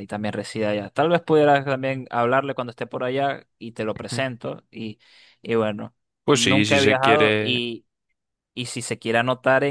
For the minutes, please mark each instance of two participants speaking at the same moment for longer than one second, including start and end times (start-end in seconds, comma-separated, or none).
6.3-7.6